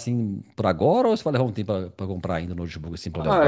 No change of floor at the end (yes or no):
no